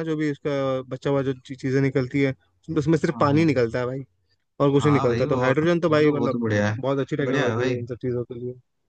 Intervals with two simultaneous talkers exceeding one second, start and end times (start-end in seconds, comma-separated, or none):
4.8-6.4